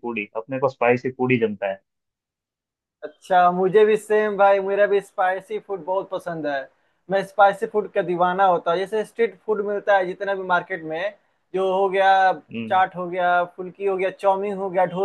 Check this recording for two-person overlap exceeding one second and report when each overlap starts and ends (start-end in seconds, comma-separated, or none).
none